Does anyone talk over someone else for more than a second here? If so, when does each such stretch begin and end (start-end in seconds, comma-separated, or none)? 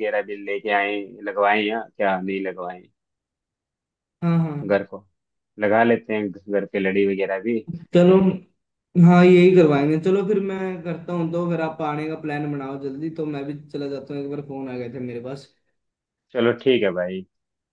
none